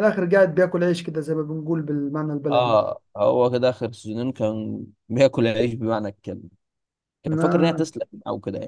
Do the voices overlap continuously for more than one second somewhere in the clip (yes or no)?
no